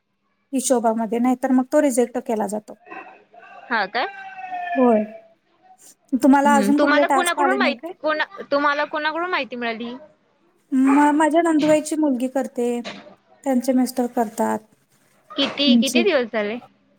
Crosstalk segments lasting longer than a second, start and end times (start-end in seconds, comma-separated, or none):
6.5-7.9